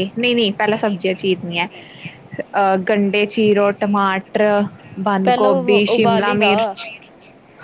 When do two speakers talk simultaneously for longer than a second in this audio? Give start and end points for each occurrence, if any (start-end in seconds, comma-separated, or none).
5.2-6.8